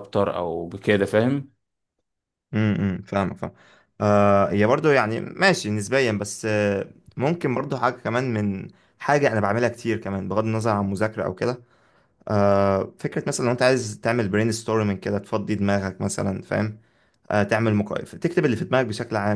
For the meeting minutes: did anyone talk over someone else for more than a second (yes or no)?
no